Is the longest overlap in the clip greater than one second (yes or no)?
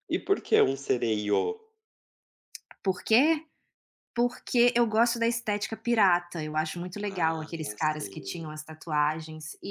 yes